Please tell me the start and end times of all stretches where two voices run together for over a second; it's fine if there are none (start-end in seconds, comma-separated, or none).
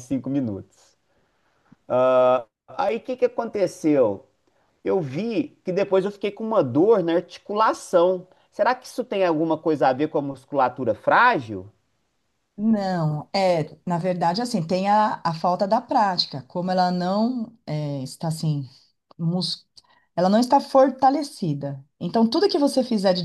none